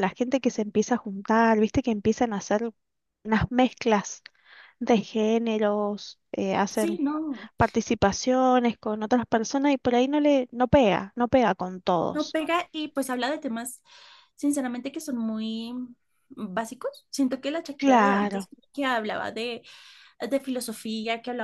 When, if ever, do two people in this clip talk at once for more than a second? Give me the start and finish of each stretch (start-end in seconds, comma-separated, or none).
none